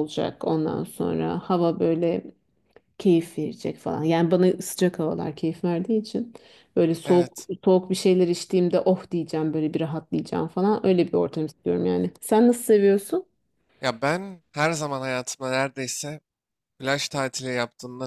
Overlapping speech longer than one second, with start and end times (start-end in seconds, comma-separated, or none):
none